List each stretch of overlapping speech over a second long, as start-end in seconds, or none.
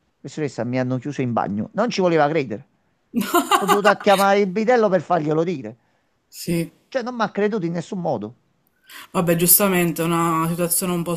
none